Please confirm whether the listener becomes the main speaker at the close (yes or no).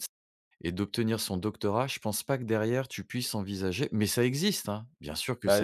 yes